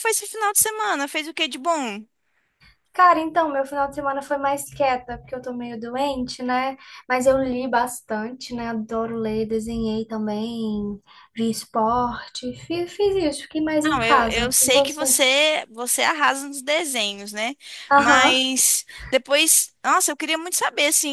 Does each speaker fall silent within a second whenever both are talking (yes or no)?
no